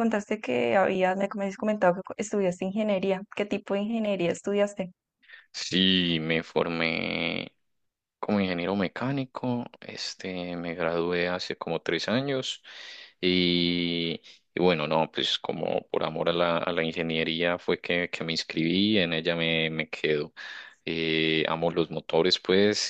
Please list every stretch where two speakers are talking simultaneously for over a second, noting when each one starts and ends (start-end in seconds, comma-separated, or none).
none